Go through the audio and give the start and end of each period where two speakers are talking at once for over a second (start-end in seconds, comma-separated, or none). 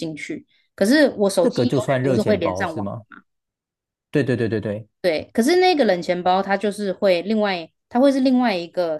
1.4-2.9